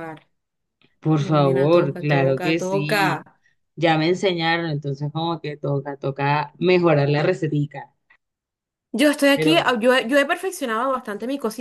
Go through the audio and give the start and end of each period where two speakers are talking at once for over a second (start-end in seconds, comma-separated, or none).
1.2-3.2